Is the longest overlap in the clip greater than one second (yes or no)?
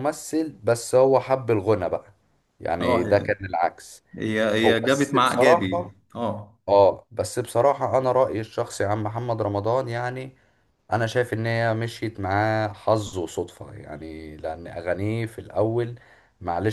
yes